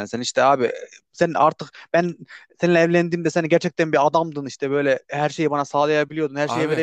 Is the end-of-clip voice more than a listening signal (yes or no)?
no